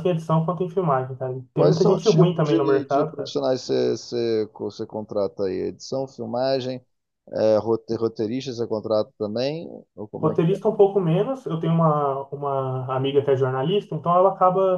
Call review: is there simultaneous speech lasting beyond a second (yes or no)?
yes